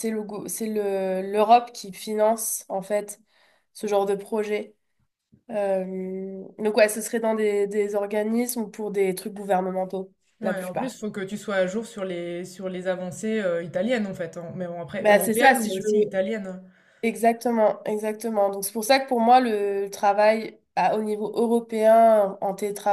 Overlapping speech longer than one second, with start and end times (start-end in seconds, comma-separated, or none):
15.0-16.2